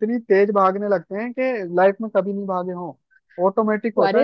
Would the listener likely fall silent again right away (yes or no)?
no